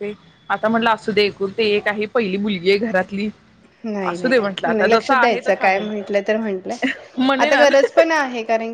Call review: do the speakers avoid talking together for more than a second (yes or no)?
no